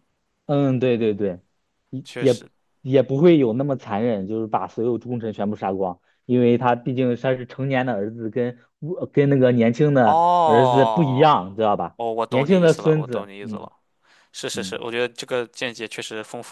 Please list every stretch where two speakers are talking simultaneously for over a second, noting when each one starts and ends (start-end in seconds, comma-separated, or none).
10.0-11.3, 12.0-13.7